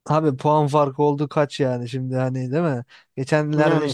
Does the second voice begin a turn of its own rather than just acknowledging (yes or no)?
no